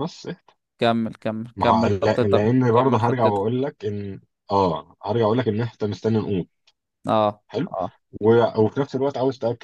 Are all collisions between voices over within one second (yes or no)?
no